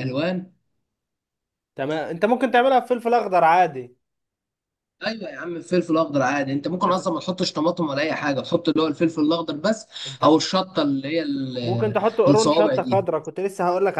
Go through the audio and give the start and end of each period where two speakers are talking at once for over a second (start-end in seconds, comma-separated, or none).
11.6-13.0